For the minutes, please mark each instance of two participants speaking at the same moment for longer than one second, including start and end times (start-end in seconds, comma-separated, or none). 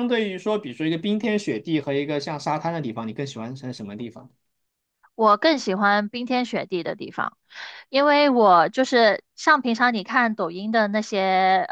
none